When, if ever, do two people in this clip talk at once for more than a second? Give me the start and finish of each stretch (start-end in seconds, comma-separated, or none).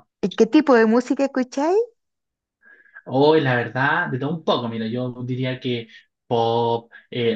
none